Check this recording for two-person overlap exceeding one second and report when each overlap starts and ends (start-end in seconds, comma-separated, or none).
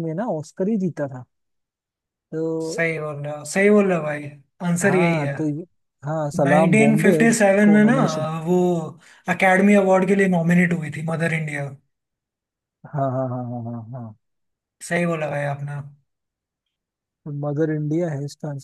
6.4-7.9